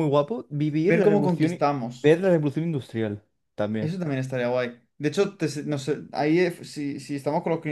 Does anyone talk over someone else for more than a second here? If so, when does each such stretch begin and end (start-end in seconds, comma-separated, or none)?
0.8-2.2